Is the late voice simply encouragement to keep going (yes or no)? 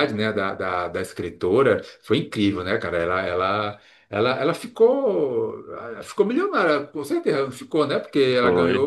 yes